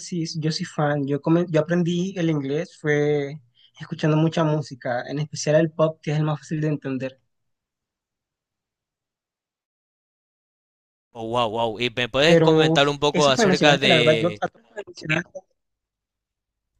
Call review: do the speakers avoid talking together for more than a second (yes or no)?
no